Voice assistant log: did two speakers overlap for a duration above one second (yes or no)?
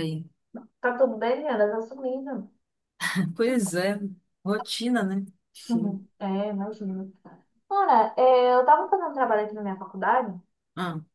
no